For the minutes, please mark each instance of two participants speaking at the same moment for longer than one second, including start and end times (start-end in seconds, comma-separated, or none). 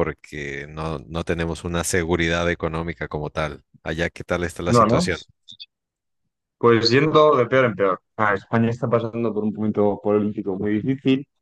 none